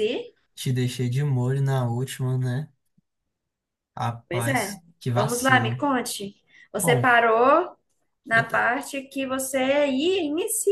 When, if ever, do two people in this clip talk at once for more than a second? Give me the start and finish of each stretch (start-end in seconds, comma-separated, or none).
4.3-5.8